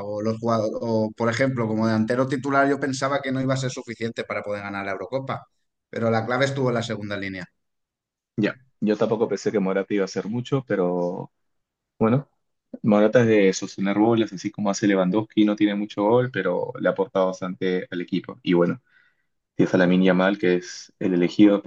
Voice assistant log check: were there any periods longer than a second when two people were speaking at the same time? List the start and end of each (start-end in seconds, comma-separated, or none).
none